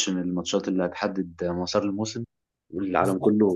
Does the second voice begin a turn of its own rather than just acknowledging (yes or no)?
no